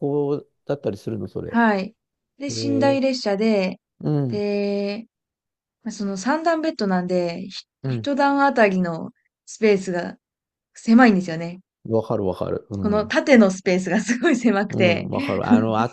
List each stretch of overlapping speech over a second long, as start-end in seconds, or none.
none